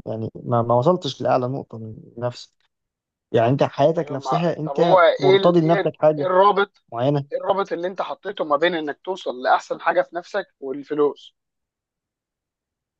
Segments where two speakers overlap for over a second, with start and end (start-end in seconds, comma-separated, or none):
4.0-6.3